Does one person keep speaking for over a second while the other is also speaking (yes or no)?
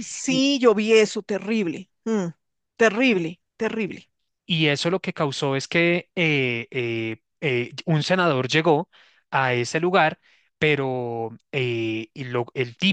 no